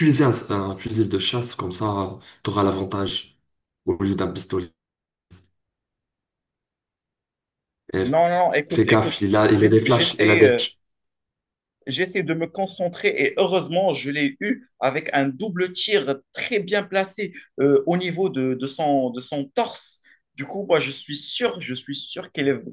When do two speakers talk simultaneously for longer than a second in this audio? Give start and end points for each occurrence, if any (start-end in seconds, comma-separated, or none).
8.7-10.6